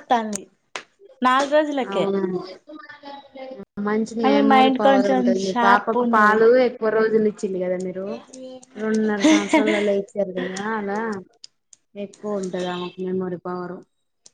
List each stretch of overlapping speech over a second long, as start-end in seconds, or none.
4.3-6.4